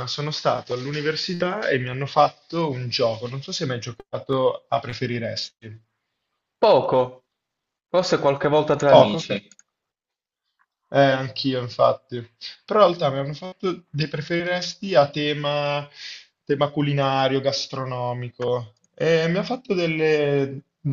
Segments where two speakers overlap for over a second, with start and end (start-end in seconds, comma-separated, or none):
none